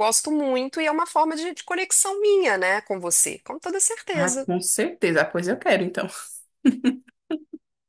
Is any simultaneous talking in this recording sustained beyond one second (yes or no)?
no